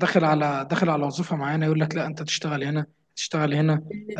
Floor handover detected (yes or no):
no